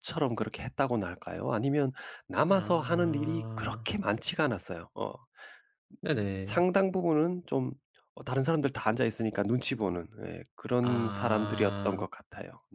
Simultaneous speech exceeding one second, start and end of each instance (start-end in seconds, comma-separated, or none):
2.5-3.9, 10.8-12.1